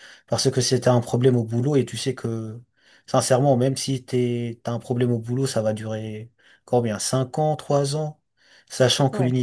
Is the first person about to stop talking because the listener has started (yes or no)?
no